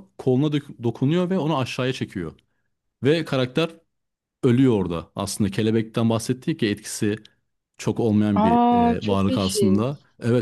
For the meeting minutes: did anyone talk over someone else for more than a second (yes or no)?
yes